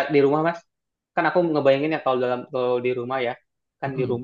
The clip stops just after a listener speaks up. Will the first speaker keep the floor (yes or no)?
yes